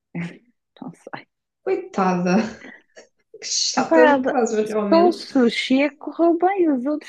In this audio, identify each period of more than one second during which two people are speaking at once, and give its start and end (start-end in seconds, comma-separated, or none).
none